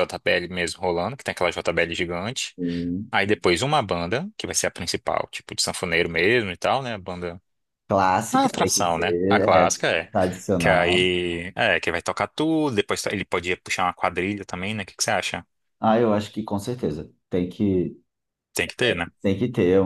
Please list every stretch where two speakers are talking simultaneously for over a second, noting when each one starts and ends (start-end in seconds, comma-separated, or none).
8.3-9.8